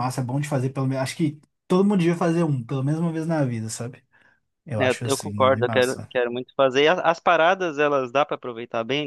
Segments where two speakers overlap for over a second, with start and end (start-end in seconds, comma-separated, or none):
4.8-6.1